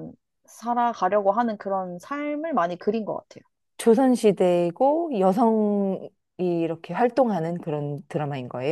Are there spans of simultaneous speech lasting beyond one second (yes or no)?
no